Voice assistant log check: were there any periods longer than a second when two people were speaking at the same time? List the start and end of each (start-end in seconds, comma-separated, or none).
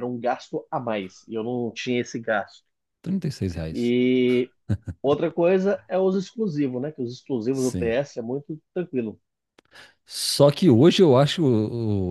none